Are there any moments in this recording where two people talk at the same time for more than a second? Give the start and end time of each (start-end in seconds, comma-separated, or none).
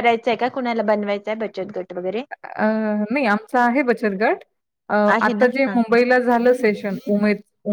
none